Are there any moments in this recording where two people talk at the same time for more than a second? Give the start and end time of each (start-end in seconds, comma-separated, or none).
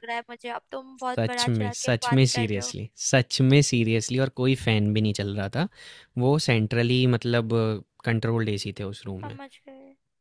1.1-2.7